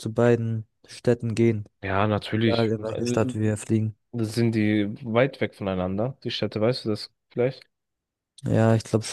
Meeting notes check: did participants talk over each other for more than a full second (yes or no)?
no